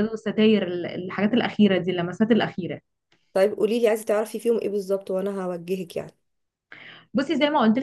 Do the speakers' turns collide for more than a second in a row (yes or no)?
no